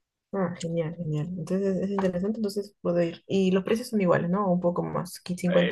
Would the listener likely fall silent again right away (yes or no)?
no